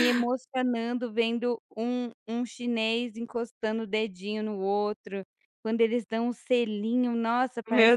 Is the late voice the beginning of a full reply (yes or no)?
no